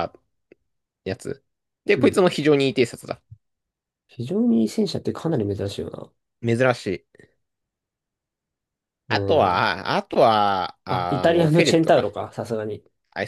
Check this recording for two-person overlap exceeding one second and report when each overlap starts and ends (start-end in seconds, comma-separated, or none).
10.9-12.1